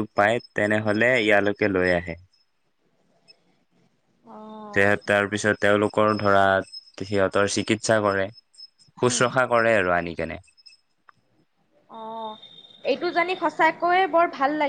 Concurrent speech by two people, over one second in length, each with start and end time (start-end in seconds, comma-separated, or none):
none